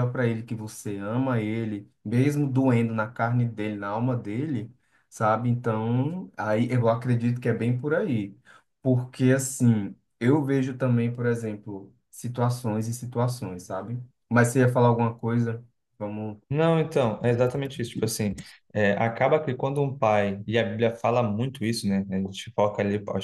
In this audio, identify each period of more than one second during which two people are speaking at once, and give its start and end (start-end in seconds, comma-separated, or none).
none